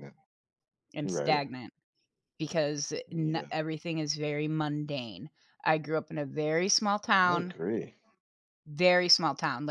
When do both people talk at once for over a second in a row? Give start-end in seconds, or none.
none